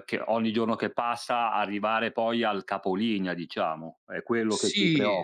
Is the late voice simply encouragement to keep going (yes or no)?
no